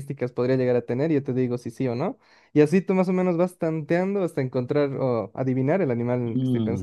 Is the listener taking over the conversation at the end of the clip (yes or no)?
yes